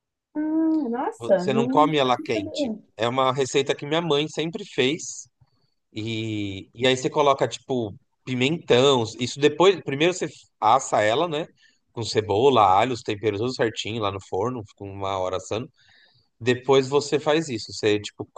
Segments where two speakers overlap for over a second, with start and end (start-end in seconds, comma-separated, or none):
1.2-2.8